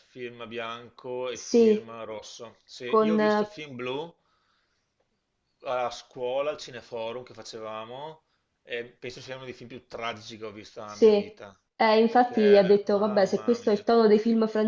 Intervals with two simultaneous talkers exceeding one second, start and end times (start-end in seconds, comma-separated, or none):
12.1-13.9